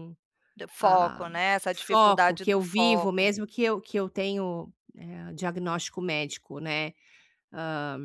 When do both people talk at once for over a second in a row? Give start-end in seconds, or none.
1.9-3.3